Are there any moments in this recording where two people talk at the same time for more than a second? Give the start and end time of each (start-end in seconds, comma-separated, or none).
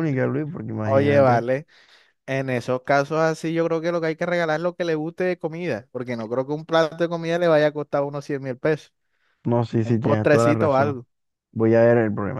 9.8-11.0